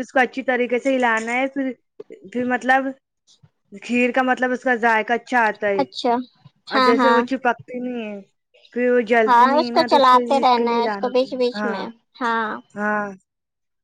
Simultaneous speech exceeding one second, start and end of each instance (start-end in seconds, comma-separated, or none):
9.3-11.8